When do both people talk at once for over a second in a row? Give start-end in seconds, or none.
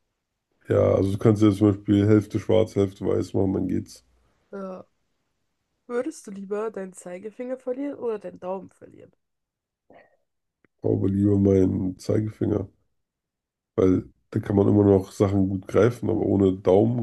none